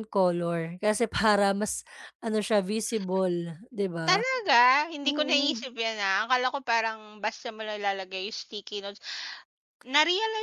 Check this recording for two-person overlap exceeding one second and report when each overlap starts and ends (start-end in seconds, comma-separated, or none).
none